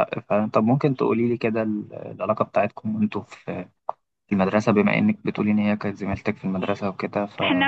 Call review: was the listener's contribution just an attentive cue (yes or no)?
no